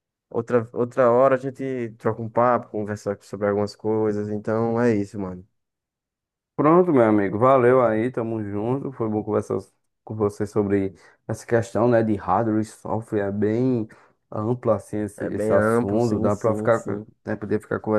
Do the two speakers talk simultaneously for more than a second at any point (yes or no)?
yes